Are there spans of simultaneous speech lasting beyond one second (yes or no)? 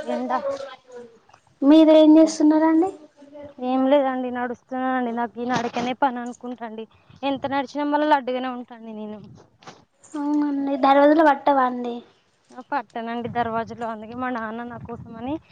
no